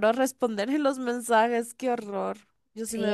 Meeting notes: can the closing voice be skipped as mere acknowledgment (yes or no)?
no